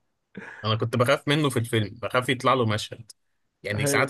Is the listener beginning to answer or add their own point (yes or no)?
no